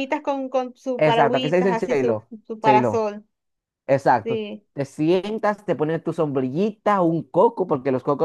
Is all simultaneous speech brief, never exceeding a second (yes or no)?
no